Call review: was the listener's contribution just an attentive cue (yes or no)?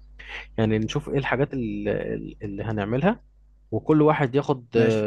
yes